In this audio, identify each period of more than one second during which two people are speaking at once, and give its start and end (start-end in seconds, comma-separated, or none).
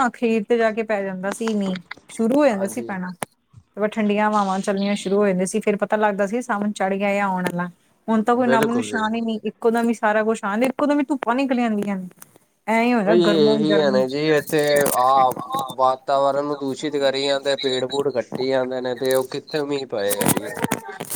none